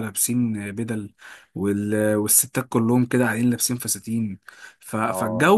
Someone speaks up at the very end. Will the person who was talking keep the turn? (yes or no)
yes